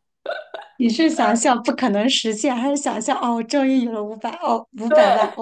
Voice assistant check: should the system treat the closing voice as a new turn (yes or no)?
yes